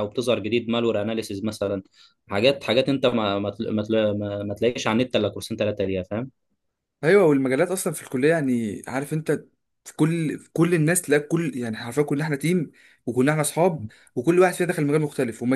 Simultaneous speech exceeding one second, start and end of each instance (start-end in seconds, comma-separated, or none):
none